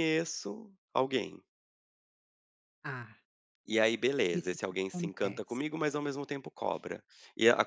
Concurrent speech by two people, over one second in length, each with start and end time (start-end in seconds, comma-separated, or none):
4.3-5.6